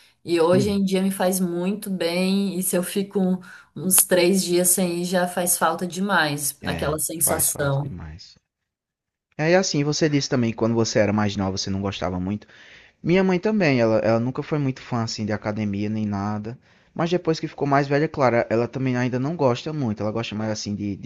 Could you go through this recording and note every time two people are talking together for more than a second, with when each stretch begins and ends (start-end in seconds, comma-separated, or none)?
6.6-7.9